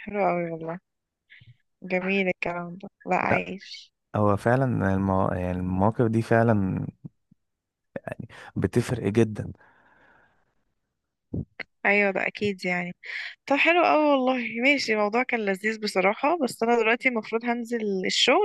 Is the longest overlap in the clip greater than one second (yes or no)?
no